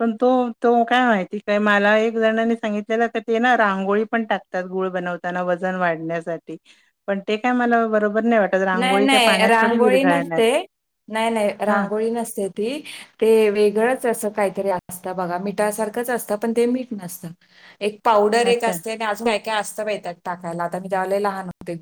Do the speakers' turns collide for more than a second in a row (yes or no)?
yes